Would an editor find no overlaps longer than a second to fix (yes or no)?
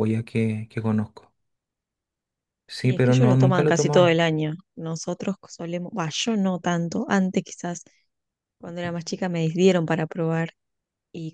no